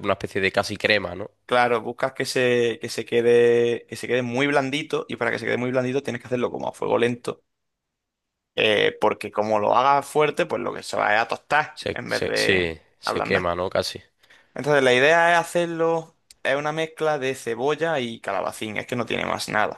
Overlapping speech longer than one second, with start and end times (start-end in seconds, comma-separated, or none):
11.7-13.5